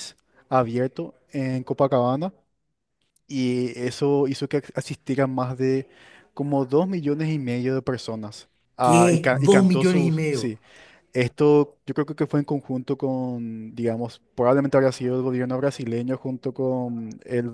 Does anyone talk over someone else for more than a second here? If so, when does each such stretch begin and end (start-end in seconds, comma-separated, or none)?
8.8-10.6